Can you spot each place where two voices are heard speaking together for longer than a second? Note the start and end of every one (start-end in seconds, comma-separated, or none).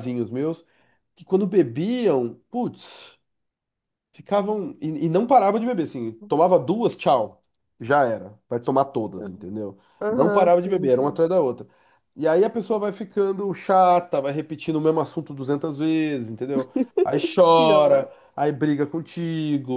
10.0-11.2